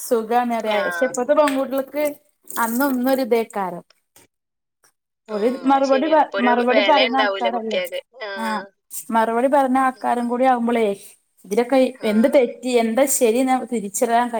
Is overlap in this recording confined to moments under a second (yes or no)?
no